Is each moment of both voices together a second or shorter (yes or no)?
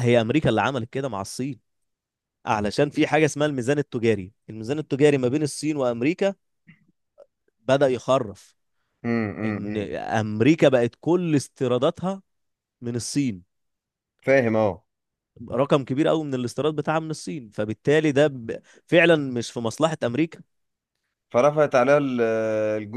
yes